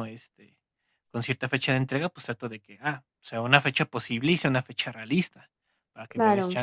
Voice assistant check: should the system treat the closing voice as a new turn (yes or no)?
no